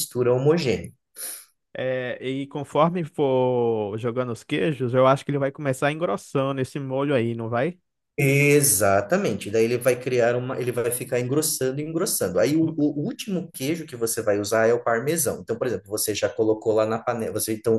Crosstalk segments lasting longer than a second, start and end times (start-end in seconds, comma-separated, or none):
none